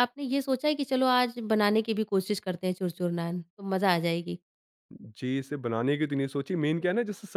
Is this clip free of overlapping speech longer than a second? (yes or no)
yes